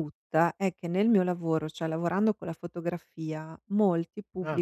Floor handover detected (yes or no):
no